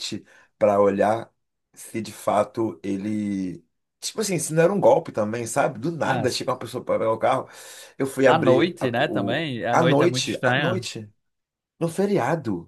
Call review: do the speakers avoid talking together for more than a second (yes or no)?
no